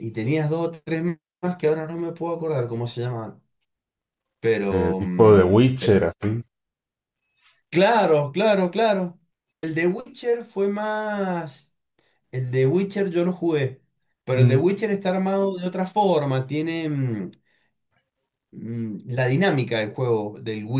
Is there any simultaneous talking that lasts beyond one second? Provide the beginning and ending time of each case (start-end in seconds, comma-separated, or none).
4.7-6.0